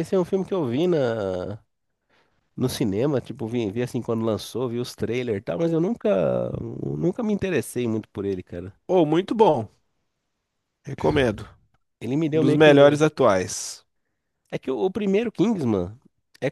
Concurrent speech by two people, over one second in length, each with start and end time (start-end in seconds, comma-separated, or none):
none